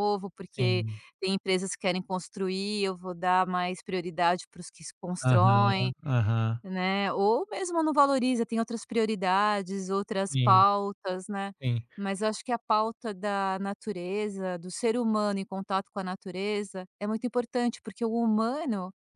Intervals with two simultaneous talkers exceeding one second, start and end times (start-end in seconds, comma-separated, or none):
none